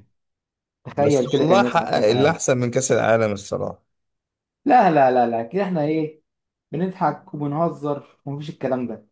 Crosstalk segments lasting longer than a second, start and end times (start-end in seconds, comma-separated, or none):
1.0-2.4